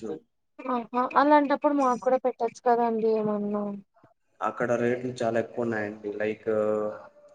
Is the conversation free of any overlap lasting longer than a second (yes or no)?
yes